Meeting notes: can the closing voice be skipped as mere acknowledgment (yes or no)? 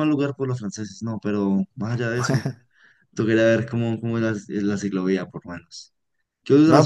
no